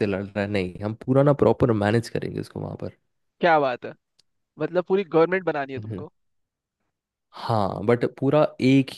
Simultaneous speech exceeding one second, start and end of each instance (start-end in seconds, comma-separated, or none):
none